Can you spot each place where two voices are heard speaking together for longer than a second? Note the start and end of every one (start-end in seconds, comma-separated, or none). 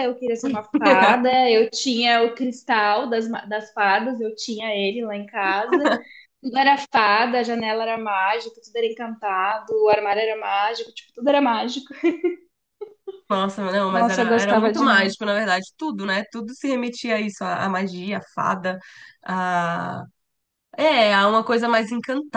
13.9-15.1